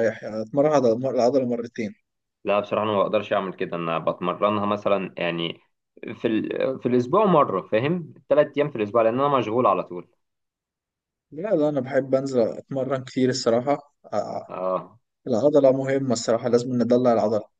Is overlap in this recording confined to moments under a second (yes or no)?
yes